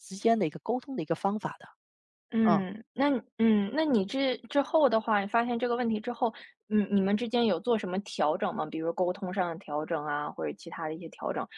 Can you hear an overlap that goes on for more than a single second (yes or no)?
no